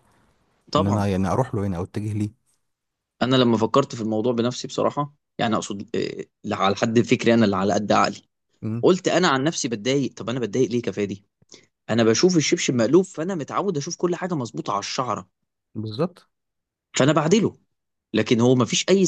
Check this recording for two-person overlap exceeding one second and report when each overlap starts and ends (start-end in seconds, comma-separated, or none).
none